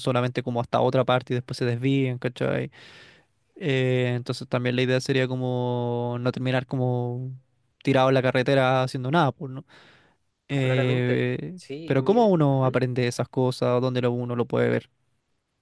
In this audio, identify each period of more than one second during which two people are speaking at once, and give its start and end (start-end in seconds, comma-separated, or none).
10.6-12.8